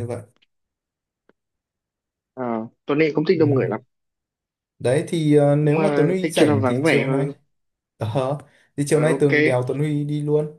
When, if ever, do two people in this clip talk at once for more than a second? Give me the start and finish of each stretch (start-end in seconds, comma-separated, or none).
5.6-7.3